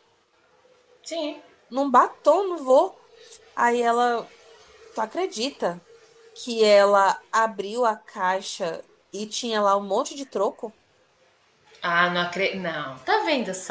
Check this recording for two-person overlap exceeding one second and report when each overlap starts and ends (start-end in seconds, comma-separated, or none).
none